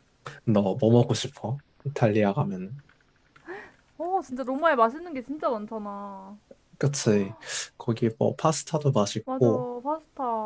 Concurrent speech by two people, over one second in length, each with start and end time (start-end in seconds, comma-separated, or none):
none